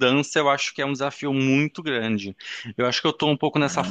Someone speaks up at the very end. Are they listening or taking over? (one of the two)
listening